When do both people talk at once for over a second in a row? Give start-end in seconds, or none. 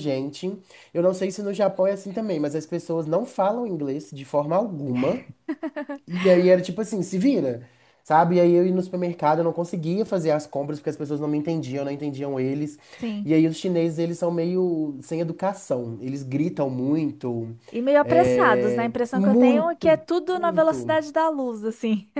18.0-21.0